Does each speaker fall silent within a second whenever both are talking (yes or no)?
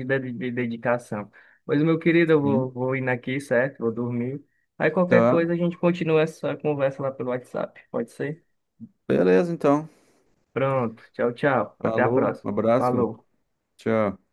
no